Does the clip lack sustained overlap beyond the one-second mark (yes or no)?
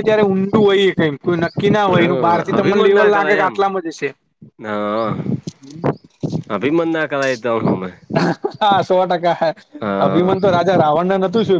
no